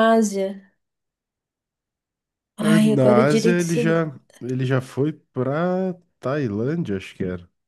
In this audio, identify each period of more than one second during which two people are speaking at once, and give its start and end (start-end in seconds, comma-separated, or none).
2.6-4.0